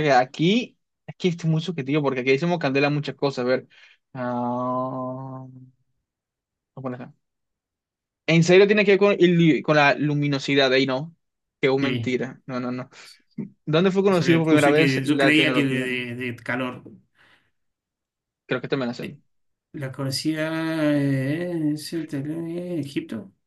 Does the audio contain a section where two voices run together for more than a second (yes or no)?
yes